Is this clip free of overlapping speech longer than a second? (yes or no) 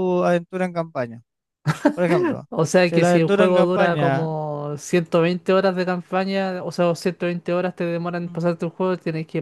no